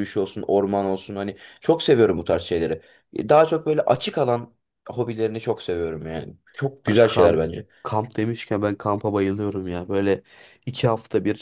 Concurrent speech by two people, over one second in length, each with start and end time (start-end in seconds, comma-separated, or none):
none